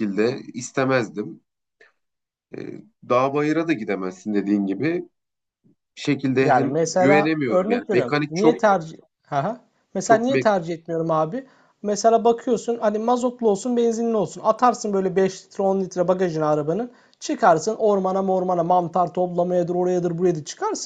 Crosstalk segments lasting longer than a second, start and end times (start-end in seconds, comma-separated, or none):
6.4-8.6